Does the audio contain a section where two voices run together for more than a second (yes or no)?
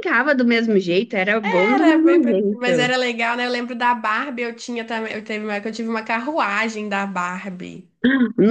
yes